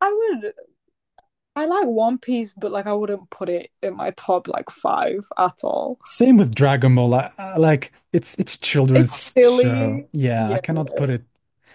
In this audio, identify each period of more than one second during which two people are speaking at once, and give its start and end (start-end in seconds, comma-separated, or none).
8.9-10.6